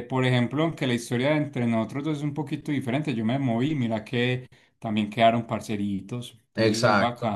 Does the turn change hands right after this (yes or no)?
yes